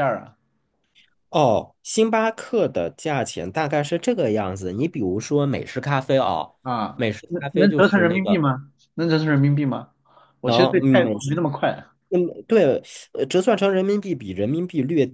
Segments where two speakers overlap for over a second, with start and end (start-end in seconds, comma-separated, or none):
6.9-8.4